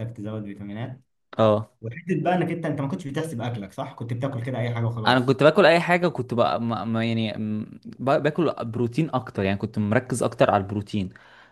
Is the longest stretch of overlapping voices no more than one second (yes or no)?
yes